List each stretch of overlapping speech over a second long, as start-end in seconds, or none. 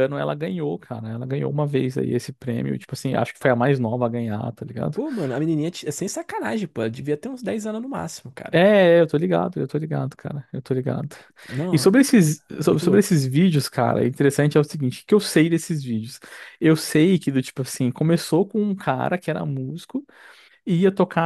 none